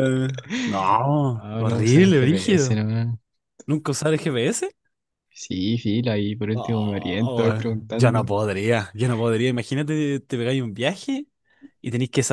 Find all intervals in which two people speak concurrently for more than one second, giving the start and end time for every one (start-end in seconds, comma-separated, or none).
1.3-2.8, 6.5-8.3